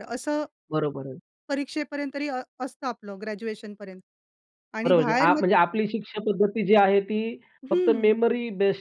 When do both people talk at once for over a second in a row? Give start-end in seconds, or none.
none